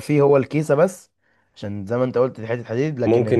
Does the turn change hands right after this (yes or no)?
yes